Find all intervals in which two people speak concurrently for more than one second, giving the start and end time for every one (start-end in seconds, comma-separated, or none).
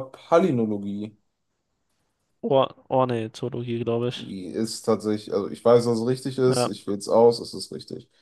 none